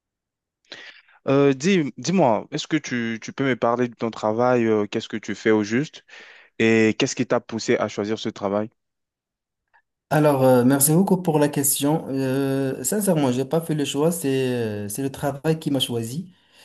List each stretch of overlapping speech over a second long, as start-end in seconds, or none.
none